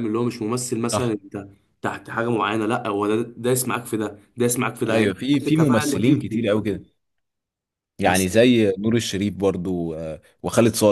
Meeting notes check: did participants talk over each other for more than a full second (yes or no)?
yes